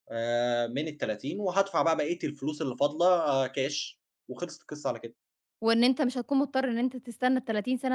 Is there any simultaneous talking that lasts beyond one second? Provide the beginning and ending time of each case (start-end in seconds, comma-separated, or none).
none